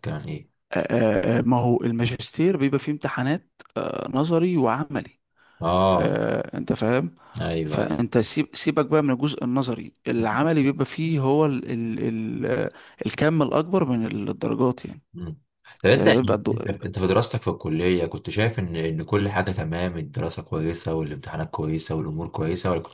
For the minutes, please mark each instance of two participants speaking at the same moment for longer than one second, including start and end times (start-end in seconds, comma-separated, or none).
none